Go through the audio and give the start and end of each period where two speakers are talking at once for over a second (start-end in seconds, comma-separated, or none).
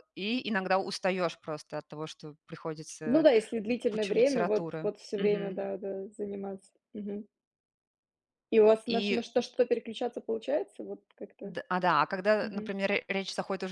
3.9-5.7